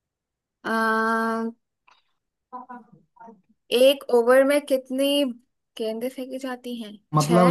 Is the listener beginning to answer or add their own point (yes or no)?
yes